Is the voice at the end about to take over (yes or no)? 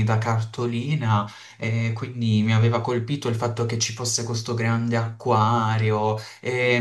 no